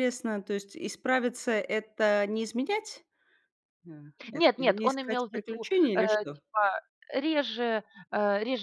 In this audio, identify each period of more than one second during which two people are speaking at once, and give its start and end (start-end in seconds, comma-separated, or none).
4.3-6.4